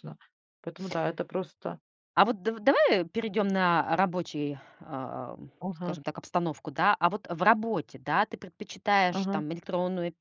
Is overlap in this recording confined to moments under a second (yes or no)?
yes